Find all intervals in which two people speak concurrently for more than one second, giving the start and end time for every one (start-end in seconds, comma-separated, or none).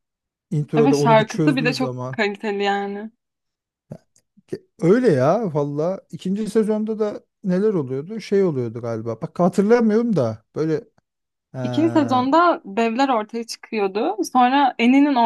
0.8-2.2